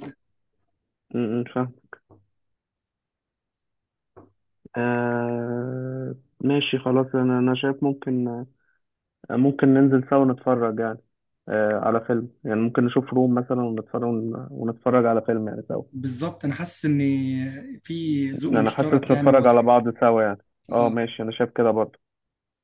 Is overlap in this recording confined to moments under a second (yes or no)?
no